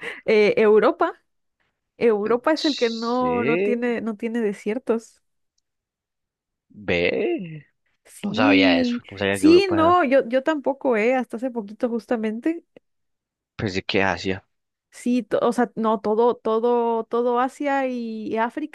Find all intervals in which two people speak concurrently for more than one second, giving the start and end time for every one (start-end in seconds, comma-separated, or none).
2.5-4.0, 8.2-10.0